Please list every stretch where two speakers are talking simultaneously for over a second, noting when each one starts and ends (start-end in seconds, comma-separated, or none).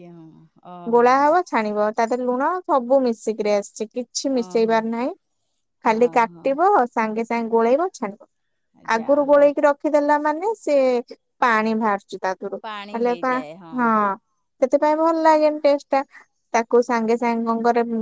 none